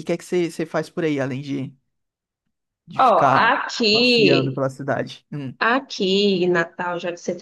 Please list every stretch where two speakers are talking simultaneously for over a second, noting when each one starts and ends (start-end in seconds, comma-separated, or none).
3.0-4.6